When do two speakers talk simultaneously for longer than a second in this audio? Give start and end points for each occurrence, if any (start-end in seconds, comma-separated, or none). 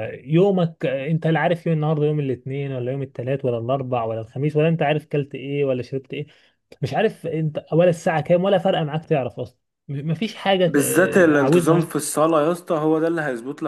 10.7-11.9